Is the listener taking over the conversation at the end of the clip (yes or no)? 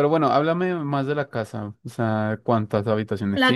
yes